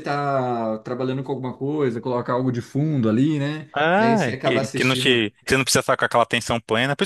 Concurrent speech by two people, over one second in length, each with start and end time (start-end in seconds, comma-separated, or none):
3.7-5.3